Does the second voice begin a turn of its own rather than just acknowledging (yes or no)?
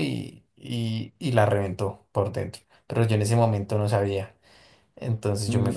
yes